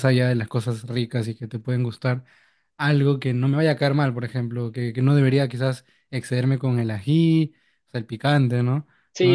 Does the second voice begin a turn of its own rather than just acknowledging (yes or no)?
yes